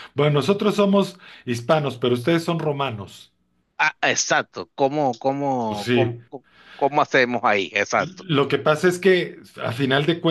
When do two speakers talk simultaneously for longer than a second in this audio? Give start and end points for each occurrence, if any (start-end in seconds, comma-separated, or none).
none